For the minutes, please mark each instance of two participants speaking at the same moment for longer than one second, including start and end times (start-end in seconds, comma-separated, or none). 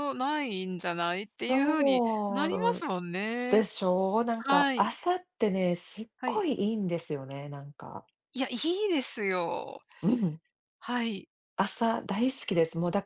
1.5-2.9